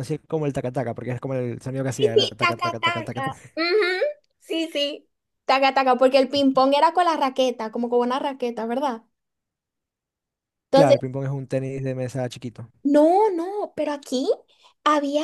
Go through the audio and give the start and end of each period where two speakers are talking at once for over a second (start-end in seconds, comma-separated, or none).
2.0-3.4